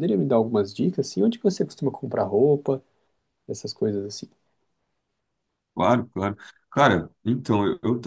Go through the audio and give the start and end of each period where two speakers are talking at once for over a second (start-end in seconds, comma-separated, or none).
none